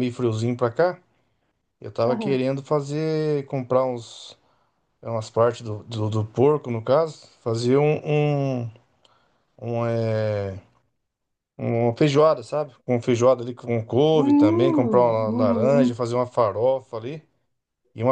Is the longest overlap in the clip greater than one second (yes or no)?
yes